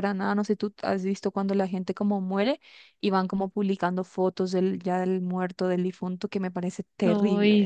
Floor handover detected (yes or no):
yes